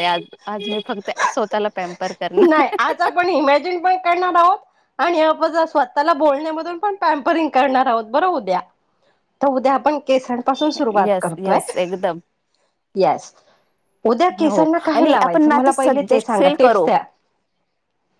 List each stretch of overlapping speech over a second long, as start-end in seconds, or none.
14.5-16.8